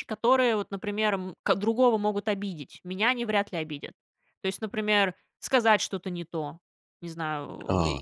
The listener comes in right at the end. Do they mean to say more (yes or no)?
no